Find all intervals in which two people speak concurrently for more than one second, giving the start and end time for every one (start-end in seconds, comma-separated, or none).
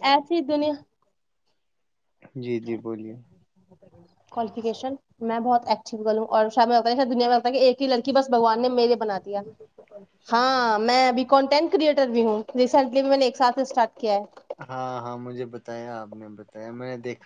none